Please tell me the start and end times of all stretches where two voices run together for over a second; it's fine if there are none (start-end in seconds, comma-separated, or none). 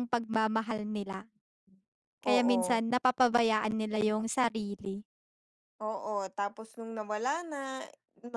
none